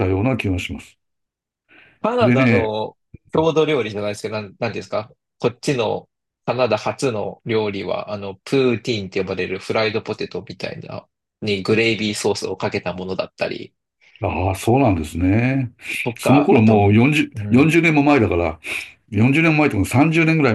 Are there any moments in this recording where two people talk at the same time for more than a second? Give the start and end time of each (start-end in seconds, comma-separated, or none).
16.2-17.8